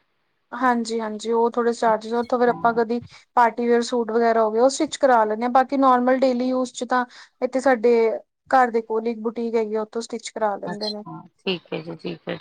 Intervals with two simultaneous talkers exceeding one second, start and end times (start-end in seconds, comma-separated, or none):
none